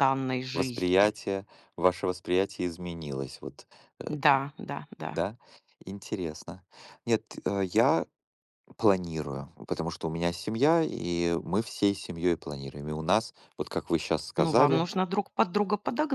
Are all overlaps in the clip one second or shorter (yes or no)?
yes